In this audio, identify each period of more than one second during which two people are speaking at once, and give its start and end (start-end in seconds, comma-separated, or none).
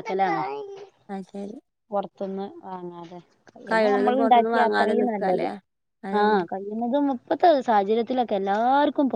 3.7-5.5